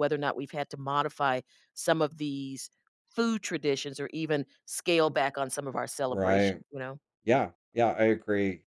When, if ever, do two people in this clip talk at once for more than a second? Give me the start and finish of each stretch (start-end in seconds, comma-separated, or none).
none